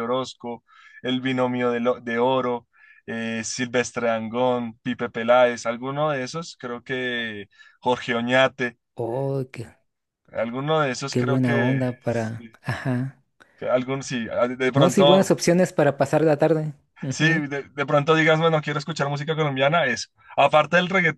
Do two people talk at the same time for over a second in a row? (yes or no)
yes